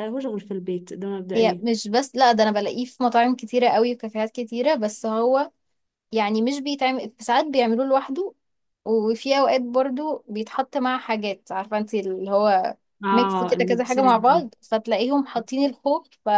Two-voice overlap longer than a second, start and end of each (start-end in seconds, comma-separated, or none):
13.0-14.4